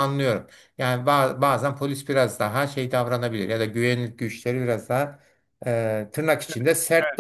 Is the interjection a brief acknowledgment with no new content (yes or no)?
no